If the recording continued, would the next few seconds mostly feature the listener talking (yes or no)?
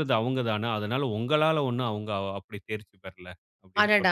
yes